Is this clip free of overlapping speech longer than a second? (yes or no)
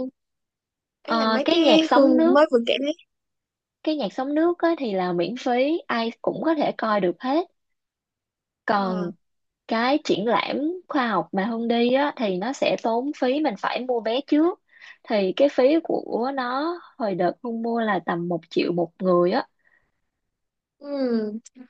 no